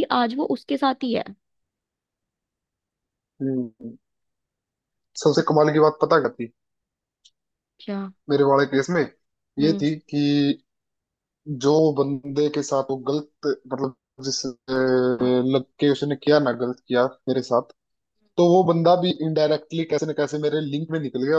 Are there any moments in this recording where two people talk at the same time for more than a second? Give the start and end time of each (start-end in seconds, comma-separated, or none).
none